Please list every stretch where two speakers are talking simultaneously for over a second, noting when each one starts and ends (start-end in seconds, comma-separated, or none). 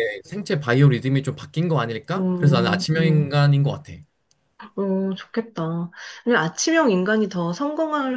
2.1-3.4